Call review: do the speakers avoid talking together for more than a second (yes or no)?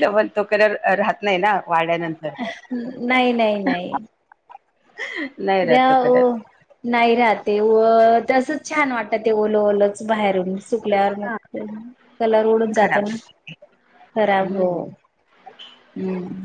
yes